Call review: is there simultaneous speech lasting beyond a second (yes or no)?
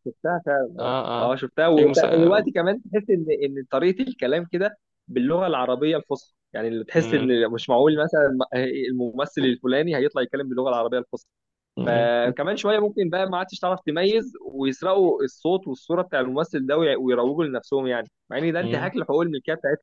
yes